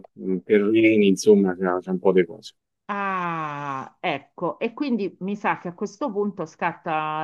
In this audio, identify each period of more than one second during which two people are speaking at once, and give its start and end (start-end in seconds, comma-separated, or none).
none